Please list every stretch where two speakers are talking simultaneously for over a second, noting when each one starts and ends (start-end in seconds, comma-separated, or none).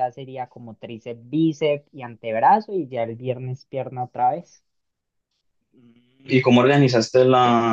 none